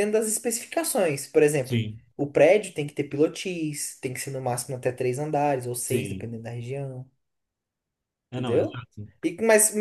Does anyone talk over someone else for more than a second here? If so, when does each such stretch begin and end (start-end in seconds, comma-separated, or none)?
none